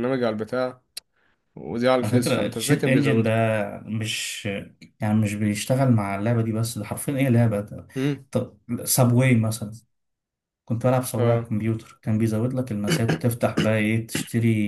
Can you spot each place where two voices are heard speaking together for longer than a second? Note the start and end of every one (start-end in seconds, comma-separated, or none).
2.0-3.3